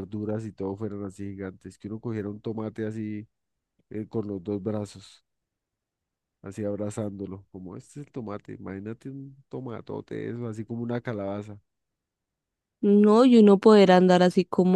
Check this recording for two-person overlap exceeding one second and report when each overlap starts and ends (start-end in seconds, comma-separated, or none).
none